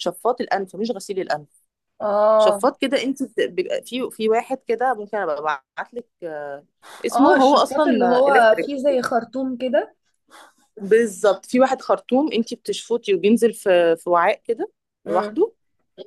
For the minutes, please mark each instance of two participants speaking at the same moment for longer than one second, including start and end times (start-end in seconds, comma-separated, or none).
7.1-8.7